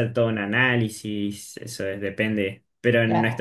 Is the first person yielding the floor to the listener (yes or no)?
no